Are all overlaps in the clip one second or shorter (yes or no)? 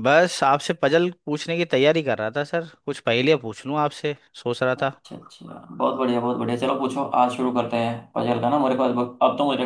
yes